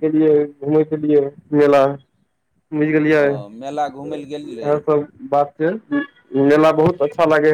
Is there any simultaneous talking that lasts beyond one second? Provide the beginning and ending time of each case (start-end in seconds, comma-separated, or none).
3.2-4.8